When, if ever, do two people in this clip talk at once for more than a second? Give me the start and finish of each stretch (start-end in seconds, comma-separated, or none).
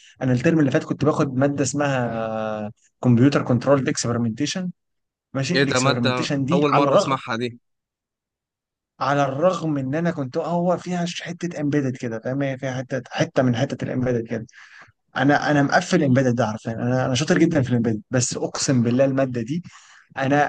5.5-7.2